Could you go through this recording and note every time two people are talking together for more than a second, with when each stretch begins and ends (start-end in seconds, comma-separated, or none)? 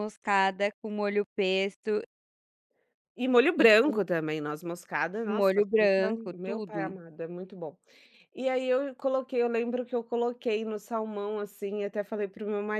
5.4-6.9